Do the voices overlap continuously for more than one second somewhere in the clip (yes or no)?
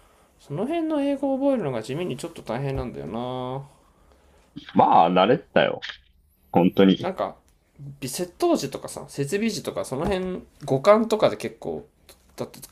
no